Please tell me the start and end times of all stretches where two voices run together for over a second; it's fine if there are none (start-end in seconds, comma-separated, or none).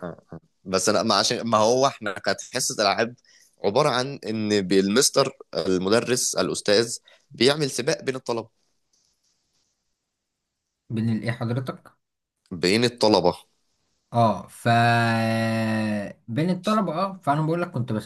none